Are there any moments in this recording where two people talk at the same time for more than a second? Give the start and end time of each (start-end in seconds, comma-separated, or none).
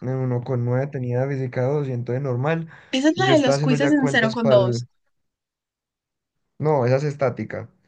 3.1-4.8